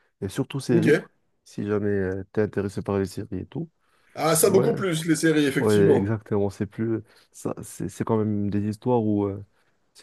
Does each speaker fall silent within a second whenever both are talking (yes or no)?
yes